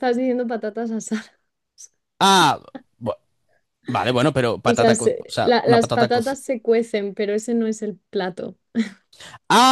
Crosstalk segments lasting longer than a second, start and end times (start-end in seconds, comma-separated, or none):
4.6-6.4